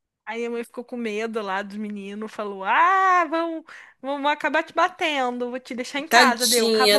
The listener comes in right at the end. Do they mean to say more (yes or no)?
yes